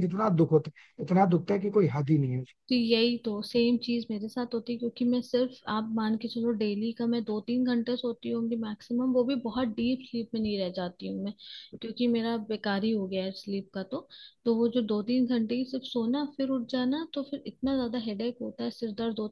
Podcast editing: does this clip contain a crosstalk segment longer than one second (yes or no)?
no